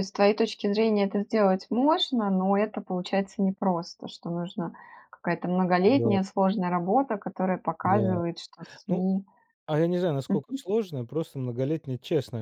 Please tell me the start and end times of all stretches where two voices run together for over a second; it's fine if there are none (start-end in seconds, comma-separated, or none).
none